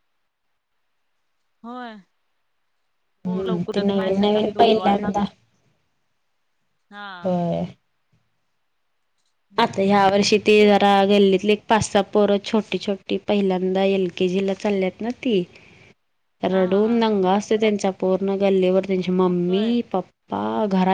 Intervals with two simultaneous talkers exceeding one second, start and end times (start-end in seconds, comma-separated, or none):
3.2-5.1